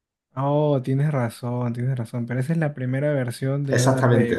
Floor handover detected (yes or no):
yes